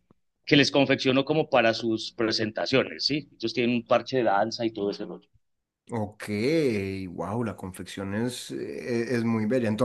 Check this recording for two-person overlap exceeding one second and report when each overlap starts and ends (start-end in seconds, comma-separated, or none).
none